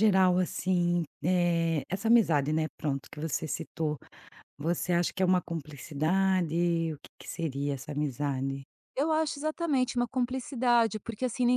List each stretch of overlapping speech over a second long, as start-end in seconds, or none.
none